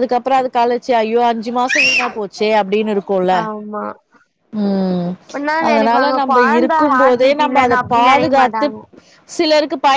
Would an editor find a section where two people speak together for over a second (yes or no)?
yes